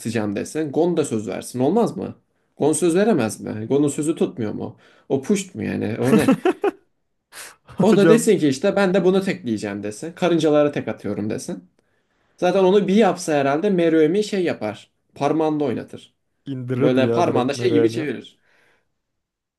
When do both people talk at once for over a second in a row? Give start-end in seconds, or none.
16.8-18.0